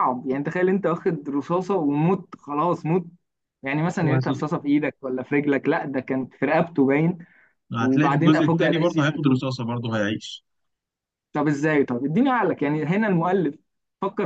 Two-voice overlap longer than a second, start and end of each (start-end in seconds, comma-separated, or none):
7.8-9.2